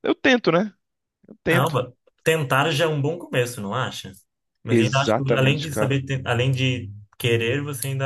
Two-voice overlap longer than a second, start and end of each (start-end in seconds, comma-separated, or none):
4.7-6.0